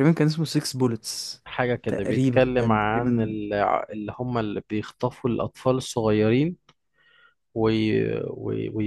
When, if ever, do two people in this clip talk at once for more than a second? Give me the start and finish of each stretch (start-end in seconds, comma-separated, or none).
1.9-3.4